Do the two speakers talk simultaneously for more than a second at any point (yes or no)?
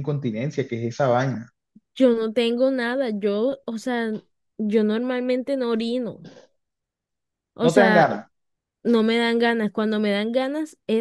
no